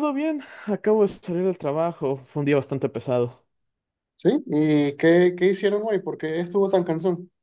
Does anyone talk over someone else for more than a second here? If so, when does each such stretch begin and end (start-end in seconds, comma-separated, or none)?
none